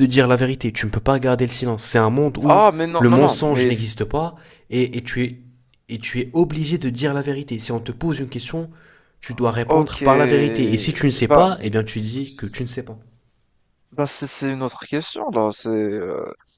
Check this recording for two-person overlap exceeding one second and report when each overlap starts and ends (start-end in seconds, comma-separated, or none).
2.4-4.0